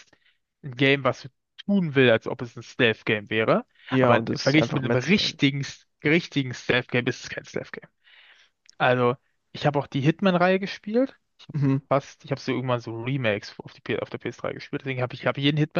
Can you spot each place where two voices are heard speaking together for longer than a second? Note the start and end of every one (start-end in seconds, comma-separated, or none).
3.9-5.4